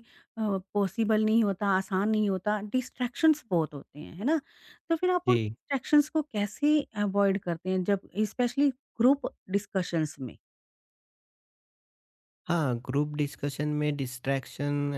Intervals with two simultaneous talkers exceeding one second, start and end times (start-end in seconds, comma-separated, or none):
none